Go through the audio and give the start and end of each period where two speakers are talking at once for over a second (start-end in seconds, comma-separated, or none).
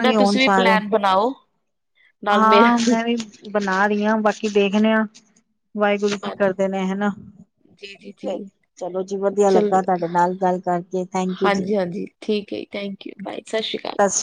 none